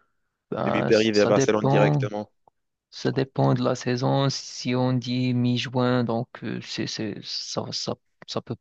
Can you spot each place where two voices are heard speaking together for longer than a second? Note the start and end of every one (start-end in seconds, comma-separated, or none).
0.7-2.1